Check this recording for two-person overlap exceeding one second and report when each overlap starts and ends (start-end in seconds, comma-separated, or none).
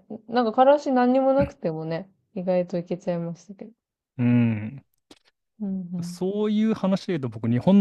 none